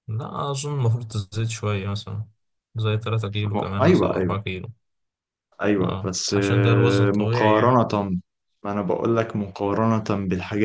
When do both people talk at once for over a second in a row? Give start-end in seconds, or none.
5.8-7.8